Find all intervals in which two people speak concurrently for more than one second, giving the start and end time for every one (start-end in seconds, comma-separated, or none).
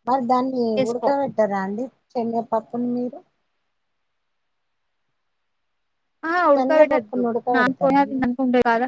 6.6-8.0